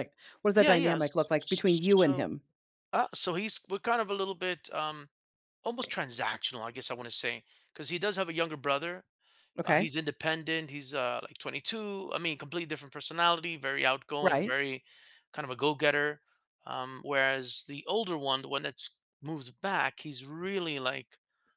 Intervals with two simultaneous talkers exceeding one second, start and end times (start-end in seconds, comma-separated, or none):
0.5-2.3